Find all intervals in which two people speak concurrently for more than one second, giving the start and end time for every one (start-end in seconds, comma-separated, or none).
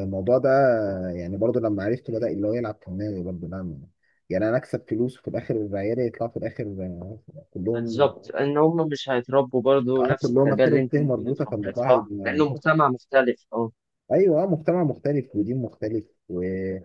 10.0-12.4